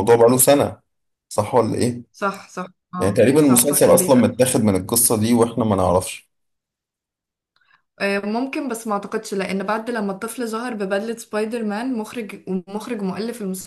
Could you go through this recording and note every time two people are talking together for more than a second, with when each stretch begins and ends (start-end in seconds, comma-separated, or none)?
3.0-4.4